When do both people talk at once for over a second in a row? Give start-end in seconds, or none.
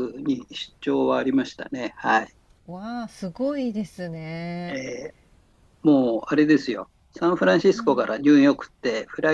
none